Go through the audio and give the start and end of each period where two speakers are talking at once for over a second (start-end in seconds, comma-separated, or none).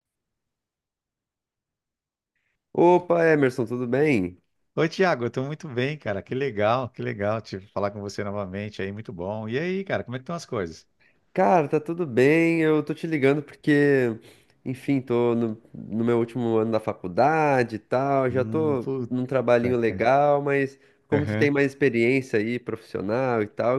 18.3-20.1